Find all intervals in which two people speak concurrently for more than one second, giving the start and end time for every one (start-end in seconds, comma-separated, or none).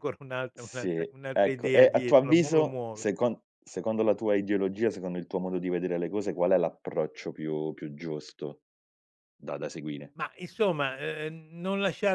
0.5-3.0